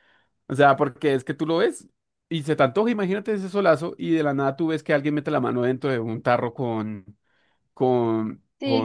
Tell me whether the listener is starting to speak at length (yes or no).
yes